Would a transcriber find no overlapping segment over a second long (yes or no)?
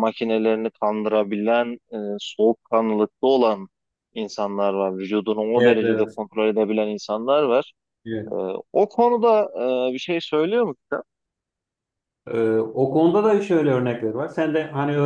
yes